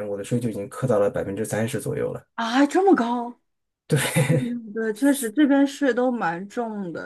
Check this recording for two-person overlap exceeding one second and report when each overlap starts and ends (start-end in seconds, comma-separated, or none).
none